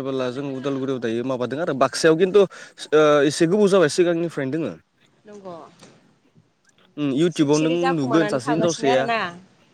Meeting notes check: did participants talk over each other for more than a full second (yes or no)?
yes